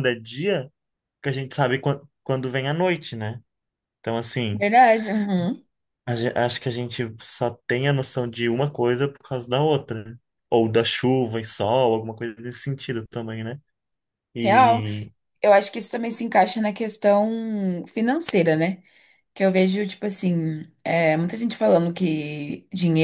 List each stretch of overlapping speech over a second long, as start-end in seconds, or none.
none